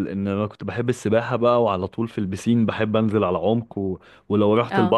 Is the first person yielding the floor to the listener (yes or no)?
no